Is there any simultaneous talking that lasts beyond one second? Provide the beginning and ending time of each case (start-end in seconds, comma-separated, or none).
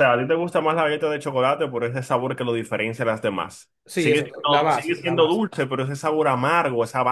3.9-5.4